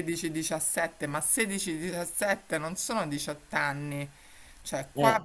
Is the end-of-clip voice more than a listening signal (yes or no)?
no